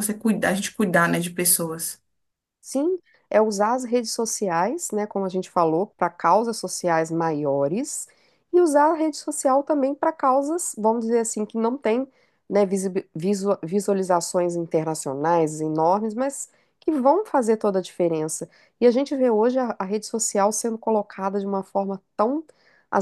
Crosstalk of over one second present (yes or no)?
no